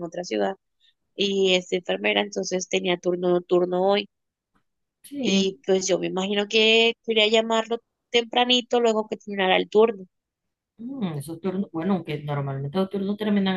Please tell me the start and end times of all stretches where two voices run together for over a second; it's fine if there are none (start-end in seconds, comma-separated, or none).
none